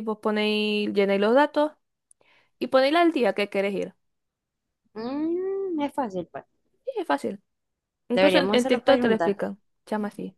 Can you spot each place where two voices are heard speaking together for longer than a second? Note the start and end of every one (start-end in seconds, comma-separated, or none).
8.1-9.3